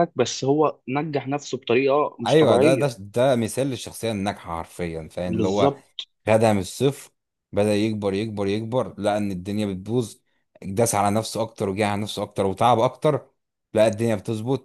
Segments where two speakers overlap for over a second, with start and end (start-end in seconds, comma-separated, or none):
none